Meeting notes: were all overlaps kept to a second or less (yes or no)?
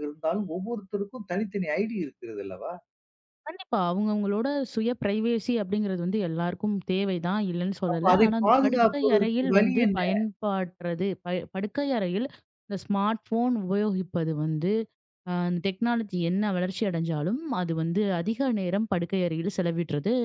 no